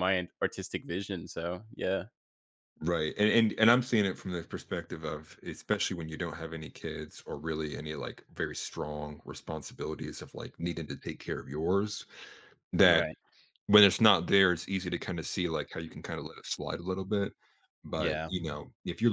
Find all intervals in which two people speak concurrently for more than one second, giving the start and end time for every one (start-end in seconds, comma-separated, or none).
none